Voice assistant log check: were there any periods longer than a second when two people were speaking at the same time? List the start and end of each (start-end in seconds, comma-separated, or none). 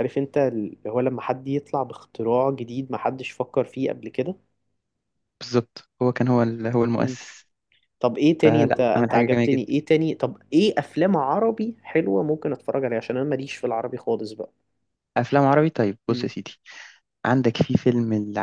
8.4-9.8